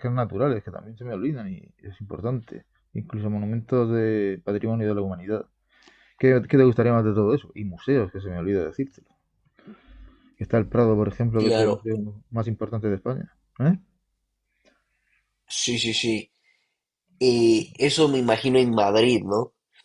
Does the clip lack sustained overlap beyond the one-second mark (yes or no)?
yes